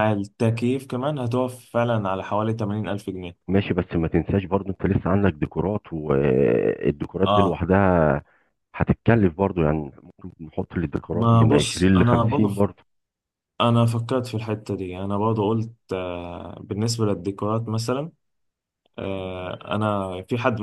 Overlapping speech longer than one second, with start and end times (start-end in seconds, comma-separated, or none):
11.1-12.6